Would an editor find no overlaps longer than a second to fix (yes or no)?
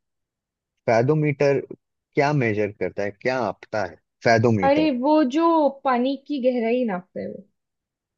yes